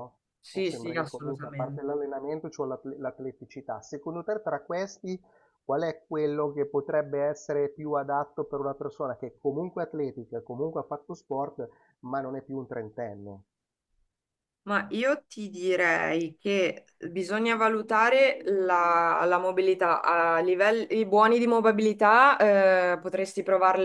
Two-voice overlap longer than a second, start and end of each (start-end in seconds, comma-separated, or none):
0.5-1.8